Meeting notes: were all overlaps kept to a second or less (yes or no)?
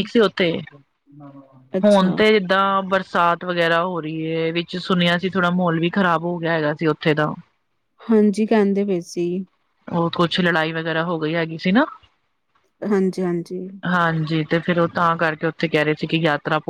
yes